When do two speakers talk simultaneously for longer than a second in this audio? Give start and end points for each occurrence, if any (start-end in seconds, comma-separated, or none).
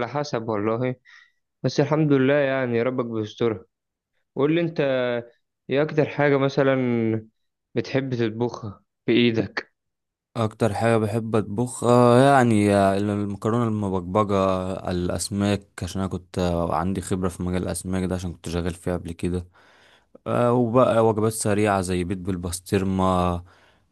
none